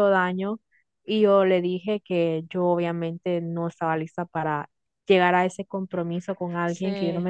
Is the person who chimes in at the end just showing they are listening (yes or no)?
yes